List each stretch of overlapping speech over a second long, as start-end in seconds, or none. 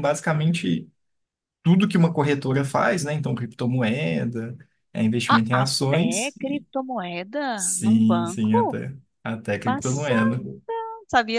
5.3-6.7, 7.5-8.8